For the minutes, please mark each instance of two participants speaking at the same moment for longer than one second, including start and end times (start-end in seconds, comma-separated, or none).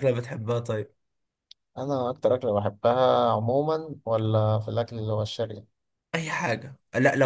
none